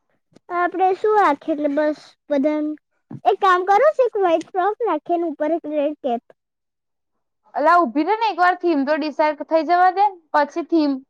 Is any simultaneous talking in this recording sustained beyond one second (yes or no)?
no